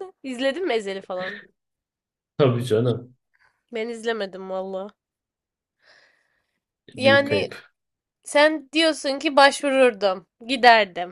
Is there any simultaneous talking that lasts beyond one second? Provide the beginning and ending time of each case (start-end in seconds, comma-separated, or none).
none